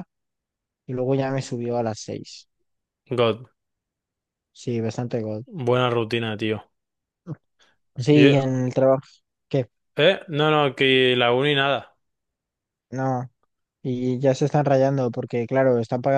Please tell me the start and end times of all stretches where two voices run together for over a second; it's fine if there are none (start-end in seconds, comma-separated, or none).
none